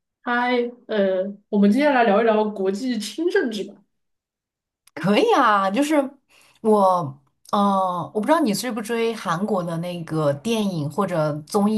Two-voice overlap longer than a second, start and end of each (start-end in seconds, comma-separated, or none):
none